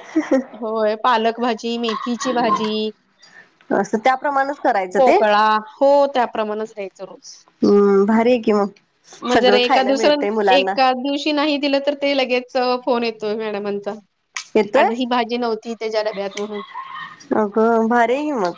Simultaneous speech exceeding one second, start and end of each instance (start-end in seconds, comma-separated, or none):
none